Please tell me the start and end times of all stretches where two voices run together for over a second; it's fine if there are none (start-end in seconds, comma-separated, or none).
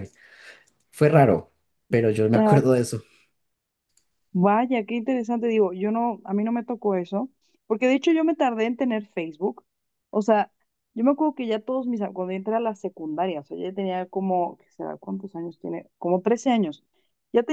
none